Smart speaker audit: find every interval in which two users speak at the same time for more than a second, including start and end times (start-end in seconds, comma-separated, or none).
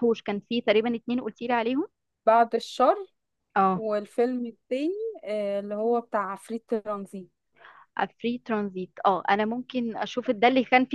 none